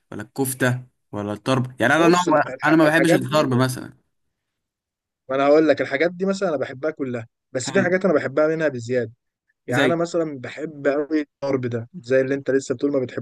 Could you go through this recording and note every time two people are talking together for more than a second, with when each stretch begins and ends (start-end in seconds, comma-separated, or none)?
2.0-3.5